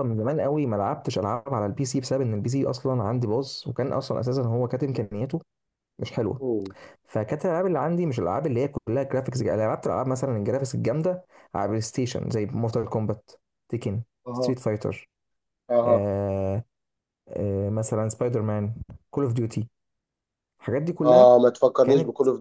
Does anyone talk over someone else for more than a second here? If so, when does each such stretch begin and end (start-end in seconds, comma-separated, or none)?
none